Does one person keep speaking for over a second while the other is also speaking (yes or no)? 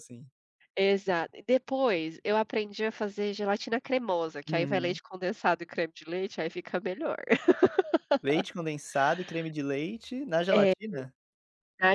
no